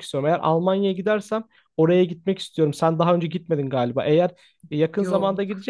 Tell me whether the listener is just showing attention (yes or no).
yes